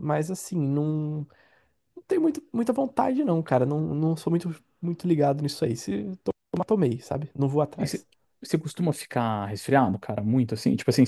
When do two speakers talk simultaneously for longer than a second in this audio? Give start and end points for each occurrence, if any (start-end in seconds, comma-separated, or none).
none